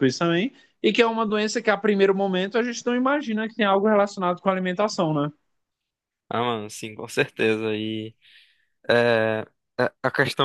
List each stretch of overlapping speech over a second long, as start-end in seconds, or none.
none